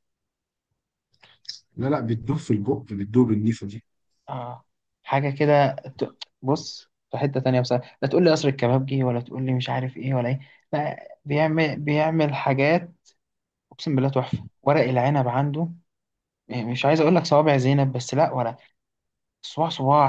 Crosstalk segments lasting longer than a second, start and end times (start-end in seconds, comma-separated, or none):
none